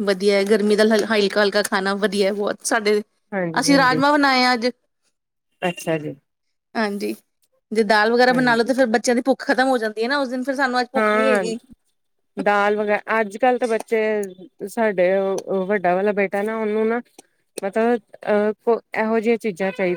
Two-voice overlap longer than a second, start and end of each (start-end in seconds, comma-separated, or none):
none